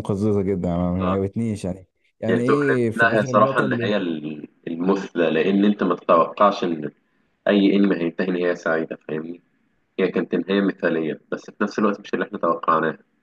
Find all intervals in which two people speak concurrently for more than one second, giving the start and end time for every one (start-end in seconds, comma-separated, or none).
2.3-3.9